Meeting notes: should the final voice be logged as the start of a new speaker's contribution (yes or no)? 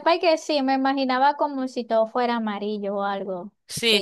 yes